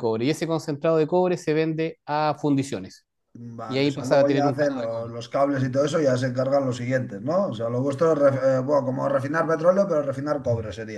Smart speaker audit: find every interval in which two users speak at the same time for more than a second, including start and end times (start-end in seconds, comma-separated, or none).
3.7-5.1